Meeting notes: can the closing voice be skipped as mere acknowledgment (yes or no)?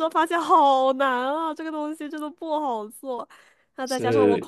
yes